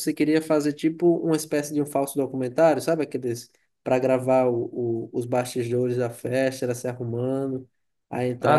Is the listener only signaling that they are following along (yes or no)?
yes